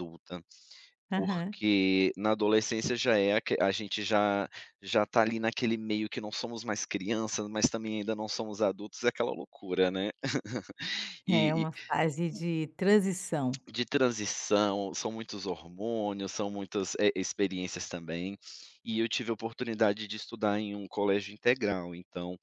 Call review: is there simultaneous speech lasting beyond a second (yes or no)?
no